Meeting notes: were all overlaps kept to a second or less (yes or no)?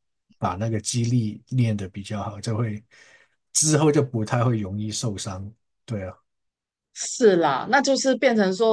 yes